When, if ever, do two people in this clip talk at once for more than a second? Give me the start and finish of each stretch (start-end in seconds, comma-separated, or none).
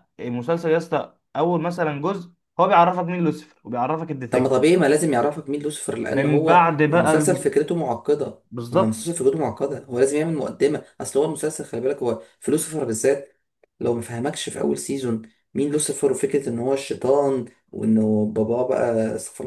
6.1-7.5